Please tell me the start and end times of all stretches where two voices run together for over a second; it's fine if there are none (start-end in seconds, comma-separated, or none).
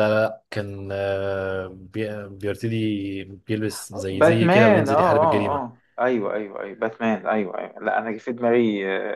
4.1-5.6